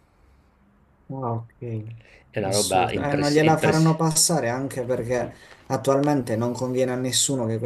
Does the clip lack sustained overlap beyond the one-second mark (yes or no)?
no